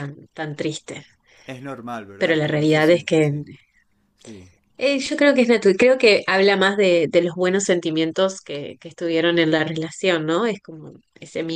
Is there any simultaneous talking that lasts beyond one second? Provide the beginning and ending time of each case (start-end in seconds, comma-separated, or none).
2.2-3.4